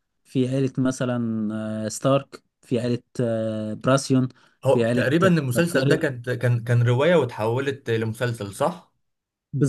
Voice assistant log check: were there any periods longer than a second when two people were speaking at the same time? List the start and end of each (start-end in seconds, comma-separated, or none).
4.7-6.1